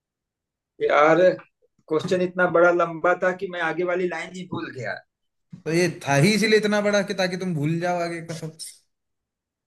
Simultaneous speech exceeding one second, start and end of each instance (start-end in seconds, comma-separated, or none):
none